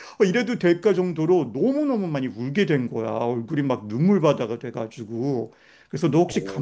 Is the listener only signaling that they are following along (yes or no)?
yes